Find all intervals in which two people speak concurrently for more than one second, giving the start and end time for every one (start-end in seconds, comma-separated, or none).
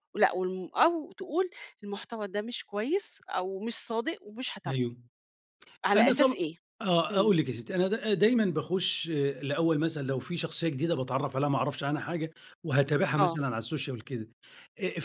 none